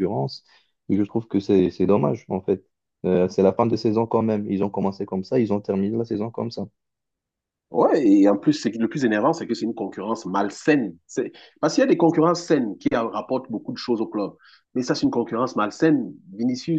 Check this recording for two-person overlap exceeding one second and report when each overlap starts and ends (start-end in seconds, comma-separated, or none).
none